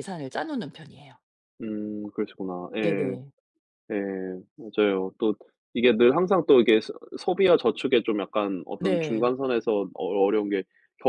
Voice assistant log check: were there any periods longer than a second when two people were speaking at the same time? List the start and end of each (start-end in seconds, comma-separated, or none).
none